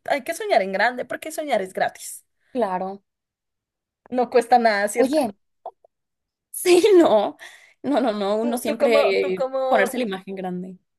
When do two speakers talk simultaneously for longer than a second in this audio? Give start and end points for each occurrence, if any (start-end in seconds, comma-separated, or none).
8.4-10.1